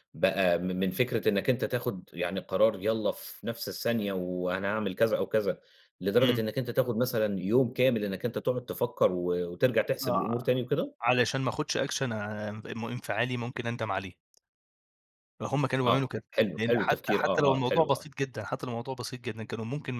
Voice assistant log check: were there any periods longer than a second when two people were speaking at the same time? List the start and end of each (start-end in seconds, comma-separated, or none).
15.8-18.1